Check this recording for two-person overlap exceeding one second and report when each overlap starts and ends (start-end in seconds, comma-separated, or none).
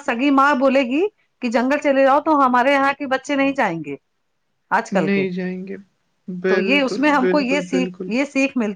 6.5-8.1